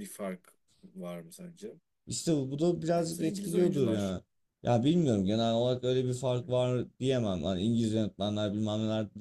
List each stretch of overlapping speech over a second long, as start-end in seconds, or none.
2.9-4.2